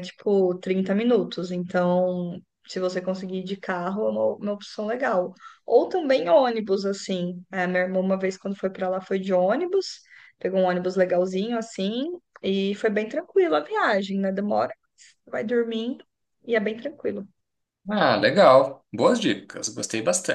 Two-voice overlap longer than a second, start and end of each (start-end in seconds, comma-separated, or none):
none